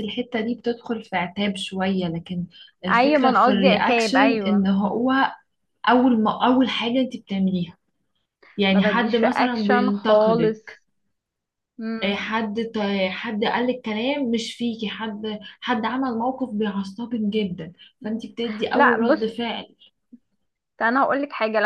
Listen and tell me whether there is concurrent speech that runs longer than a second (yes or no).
yes